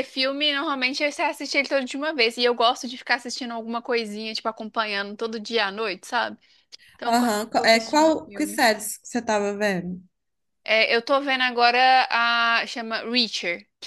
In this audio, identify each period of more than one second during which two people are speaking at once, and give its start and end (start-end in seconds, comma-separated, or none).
7.1-8.6